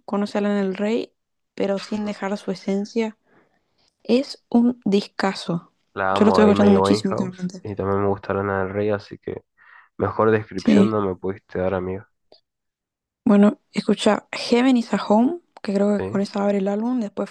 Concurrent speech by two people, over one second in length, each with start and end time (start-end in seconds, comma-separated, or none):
6.1-7.6